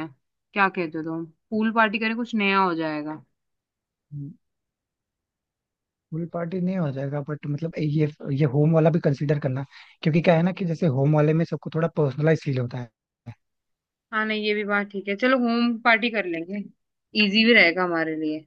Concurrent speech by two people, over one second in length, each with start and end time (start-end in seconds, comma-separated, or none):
none